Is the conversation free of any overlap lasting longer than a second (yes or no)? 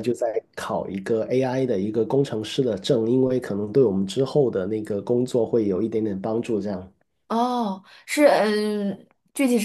yes